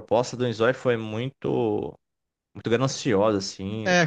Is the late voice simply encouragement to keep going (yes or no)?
no